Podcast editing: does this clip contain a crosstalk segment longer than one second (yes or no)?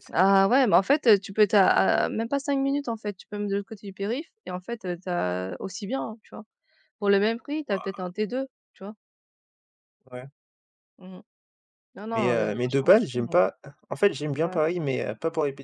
yes